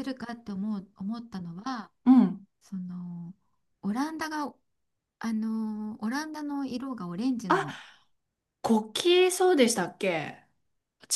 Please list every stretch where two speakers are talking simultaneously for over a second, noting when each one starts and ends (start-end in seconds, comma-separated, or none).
none